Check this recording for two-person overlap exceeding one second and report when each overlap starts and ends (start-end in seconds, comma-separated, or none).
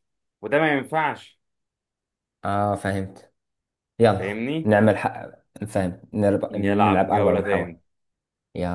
6.5-7.8